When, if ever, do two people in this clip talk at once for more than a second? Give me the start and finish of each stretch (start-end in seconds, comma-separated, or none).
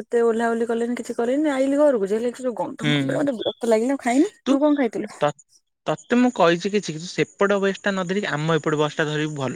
none